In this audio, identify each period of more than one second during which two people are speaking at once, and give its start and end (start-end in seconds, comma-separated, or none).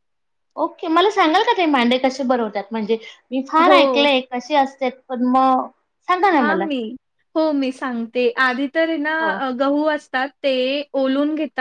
none